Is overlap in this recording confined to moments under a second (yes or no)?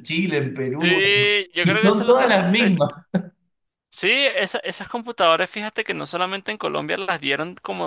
no